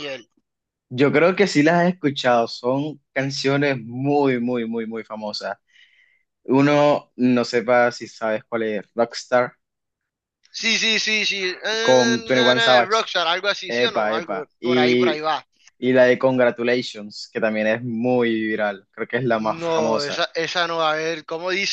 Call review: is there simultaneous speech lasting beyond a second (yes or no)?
yes